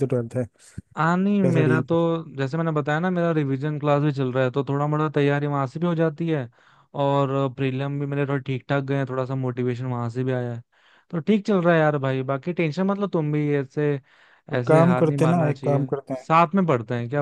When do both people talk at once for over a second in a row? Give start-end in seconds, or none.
14.6-15.9